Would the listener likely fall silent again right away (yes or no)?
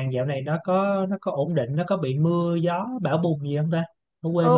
no